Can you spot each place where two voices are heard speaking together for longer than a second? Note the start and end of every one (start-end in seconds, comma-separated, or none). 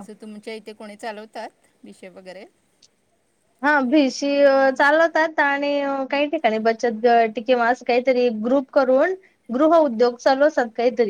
none